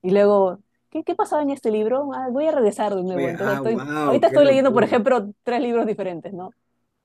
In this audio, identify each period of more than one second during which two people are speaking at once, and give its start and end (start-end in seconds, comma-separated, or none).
3.1-5.0